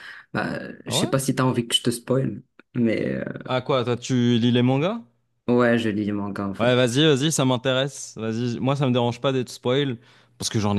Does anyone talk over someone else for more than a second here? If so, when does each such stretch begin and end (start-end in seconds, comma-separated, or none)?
none